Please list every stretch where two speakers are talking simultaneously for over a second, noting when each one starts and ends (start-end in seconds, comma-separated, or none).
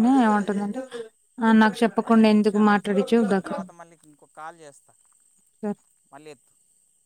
2.0-3.6